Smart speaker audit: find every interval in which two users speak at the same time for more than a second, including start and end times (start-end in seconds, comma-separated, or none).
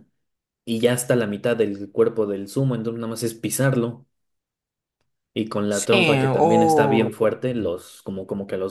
5.7-7.2